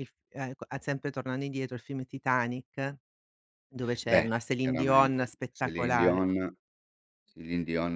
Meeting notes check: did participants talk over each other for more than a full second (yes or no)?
yes